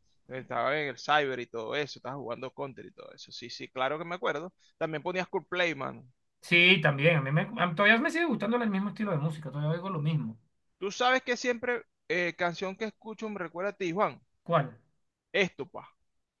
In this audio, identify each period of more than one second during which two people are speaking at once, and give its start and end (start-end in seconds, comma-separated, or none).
none